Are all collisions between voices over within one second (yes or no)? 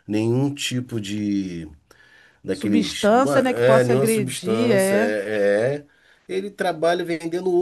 no